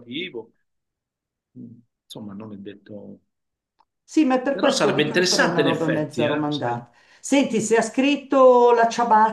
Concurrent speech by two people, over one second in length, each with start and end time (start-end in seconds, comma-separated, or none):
4.5-6.8